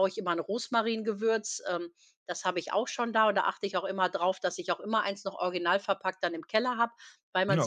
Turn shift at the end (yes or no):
no